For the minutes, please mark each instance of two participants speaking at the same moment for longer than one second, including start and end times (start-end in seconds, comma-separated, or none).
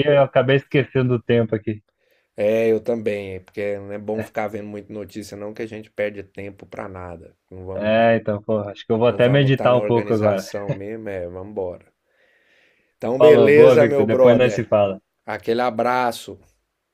9.1-10.5, 13.2-14.7